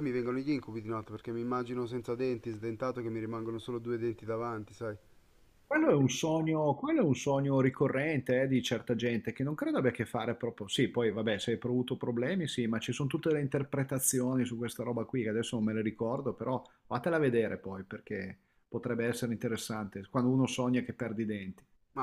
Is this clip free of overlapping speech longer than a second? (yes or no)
yes